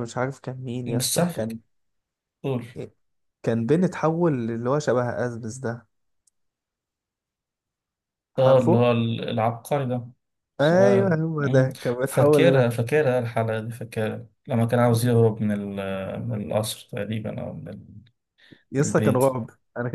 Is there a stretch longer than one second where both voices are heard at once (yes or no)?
yes